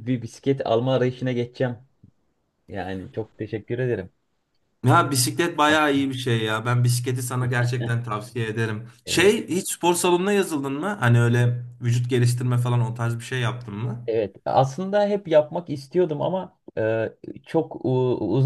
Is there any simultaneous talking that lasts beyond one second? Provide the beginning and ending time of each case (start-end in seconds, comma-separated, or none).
none